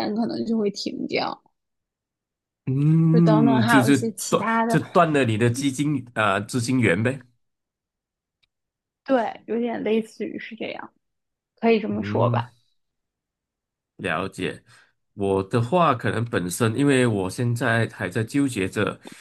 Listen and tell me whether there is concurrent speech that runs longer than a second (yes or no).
yes